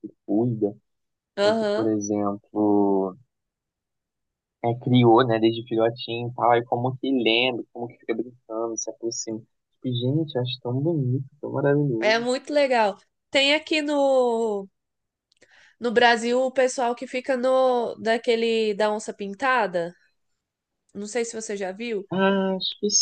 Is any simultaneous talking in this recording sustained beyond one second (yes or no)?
no